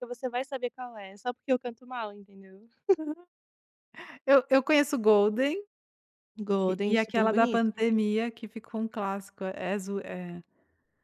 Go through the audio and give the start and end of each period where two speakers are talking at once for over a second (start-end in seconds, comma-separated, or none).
6.6-7.8